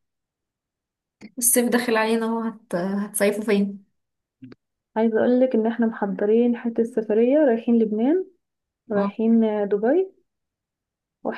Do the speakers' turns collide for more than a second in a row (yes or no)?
no